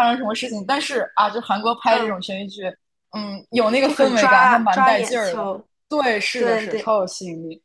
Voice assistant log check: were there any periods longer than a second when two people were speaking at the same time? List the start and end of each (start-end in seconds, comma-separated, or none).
3.8-5.5